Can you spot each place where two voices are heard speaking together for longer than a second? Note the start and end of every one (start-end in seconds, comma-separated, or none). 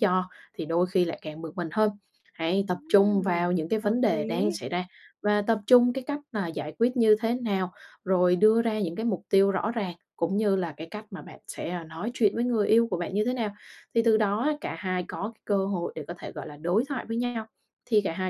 2.7-4.6